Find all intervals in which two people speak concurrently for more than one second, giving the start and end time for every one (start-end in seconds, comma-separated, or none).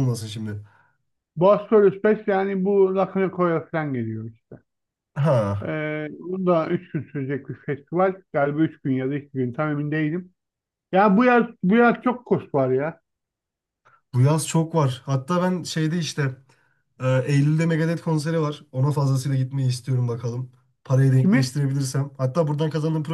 none